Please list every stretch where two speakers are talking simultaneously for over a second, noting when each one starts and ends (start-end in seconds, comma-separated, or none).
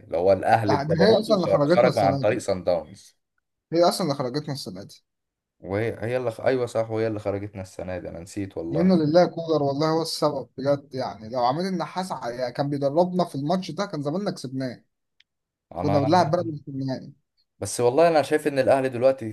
0.6-2.4